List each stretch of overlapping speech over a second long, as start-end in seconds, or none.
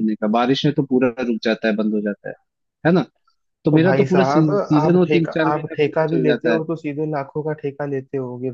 3.7-6.6